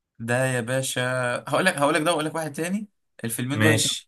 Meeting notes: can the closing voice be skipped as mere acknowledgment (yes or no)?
yes